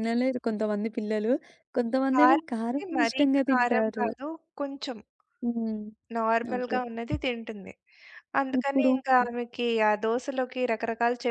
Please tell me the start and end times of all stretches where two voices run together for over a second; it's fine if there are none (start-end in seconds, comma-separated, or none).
2.1-4.1